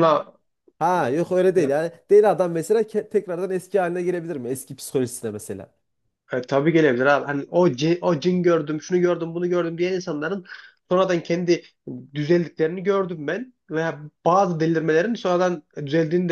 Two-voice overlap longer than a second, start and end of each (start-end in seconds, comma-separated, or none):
none